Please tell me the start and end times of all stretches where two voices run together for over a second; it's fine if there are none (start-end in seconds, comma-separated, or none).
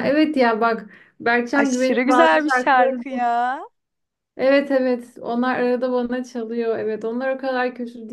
1.6-3.0